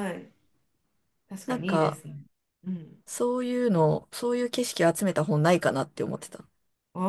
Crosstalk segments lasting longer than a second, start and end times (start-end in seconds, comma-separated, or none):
none